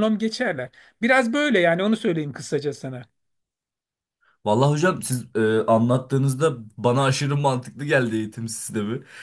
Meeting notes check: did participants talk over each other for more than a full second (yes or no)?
no